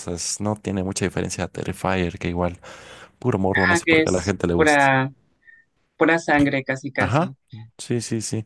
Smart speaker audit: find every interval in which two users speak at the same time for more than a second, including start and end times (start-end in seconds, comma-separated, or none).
3.5-4.9